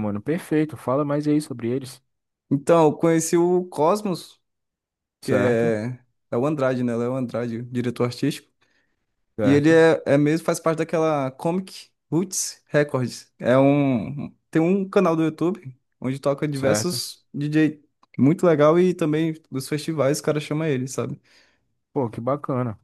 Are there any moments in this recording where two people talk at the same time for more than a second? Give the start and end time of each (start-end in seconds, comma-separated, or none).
none